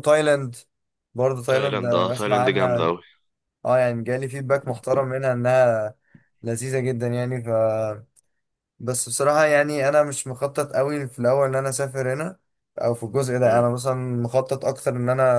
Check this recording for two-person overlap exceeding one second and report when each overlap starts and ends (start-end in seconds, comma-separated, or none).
1.5-2.9